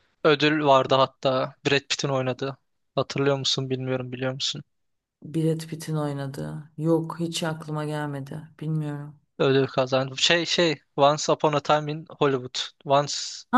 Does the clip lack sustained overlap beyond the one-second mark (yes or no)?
yes